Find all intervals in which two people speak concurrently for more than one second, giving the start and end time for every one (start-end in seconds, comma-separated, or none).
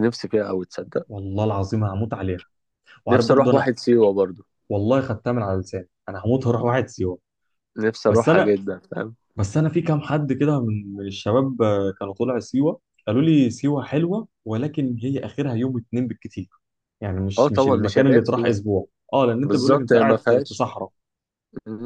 17.4-18.6, 19.4-20.6